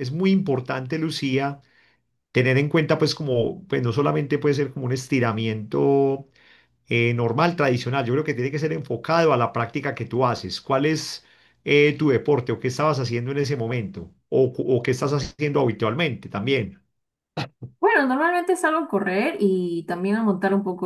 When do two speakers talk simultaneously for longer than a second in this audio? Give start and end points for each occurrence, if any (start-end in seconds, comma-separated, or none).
none